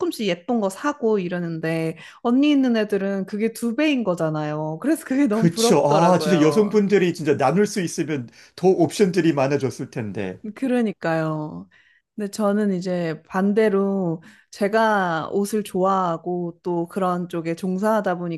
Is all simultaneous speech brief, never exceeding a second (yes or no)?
no